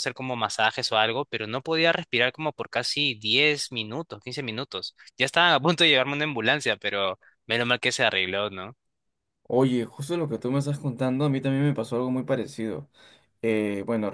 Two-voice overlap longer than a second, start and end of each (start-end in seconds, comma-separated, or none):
none